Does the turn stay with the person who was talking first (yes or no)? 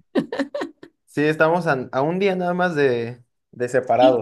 no